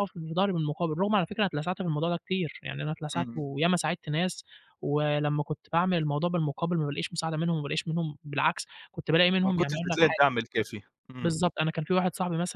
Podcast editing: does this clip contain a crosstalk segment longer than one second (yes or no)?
no